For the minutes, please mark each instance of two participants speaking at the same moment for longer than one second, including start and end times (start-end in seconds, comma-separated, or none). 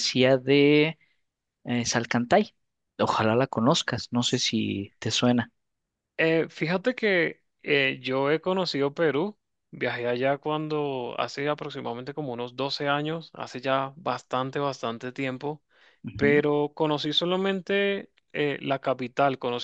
none